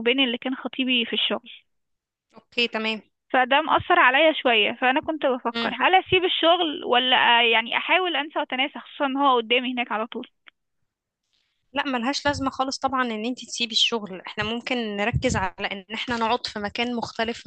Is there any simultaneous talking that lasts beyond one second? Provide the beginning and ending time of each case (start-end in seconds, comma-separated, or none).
none